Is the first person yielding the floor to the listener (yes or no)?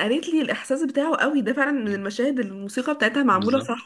yes